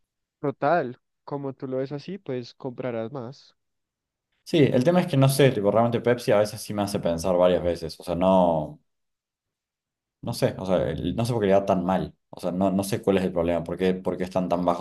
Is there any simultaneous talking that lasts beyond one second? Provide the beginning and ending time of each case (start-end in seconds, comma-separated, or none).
none